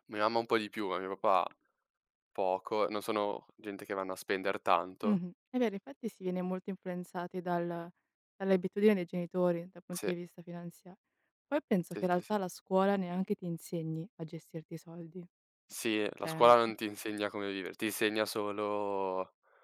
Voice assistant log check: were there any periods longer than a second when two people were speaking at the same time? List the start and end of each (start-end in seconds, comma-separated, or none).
none